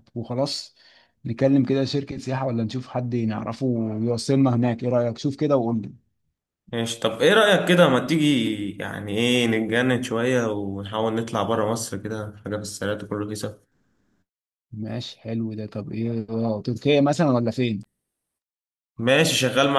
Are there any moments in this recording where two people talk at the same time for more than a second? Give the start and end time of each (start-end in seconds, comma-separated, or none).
none